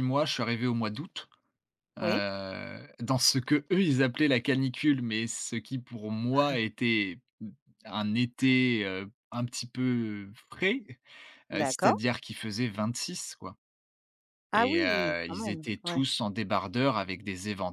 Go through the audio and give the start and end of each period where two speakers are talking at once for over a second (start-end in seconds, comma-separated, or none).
14.5-16.0